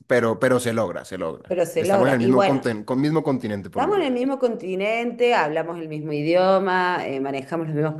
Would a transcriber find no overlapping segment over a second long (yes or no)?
no